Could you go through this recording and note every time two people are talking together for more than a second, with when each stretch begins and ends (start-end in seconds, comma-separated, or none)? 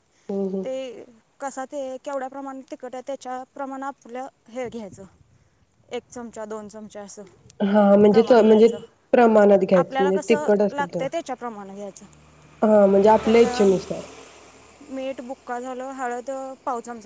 none